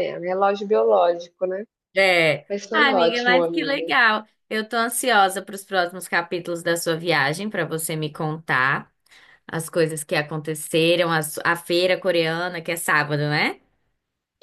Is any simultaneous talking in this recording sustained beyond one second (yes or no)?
yes